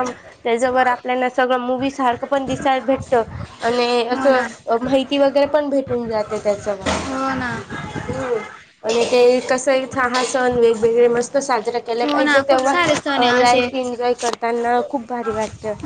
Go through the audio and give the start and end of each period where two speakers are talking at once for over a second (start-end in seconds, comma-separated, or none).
12.0-13.9